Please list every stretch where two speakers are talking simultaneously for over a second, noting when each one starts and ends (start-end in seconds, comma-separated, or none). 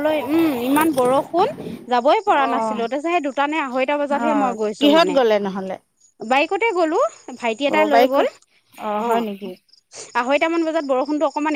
none